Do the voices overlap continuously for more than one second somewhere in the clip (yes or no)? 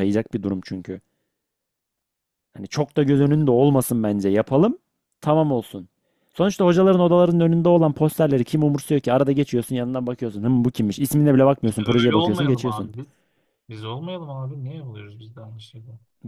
yes